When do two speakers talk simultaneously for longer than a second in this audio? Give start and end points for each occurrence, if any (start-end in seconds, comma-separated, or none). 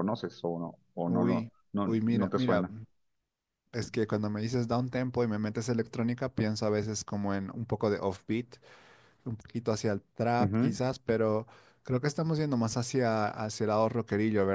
1.1-2.6